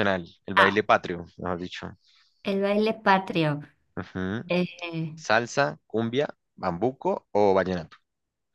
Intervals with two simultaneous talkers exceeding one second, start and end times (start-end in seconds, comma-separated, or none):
none